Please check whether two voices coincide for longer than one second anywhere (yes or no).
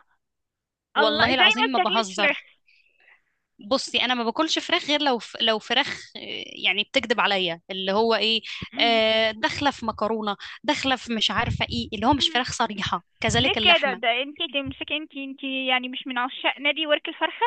yes